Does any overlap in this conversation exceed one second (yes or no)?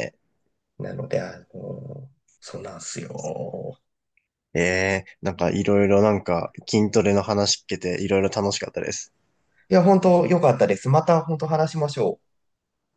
no